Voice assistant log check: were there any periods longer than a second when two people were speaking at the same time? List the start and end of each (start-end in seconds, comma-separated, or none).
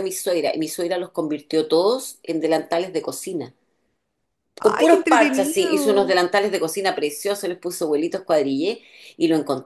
4.6-6.2